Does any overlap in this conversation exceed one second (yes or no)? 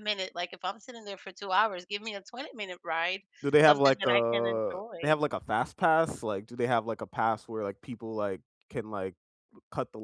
yes